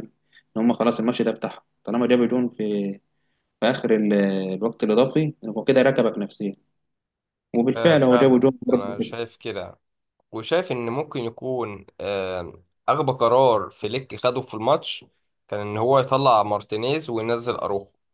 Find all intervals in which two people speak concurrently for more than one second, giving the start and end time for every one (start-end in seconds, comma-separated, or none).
7.8-9.2